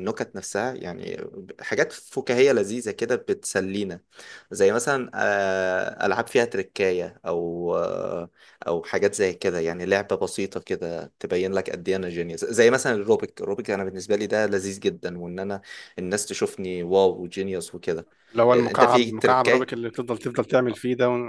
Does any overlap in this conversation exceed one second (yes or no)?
yes